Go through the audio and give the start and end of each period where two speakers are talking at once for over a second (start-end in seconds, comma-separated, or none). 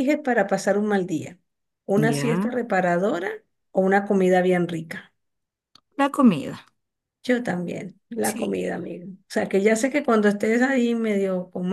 none